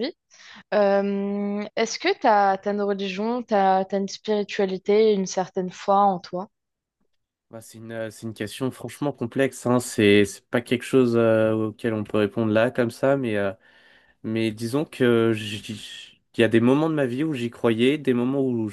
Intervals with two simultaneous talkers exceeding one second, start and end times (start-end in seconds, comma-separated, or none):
none